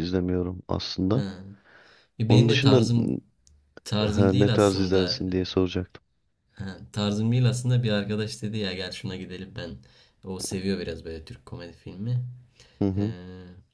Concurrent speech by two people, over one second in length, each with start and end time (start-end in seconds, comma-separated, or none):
4.0-5.2